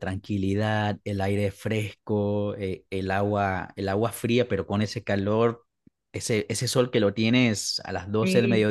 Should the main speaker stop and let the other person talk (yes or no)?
no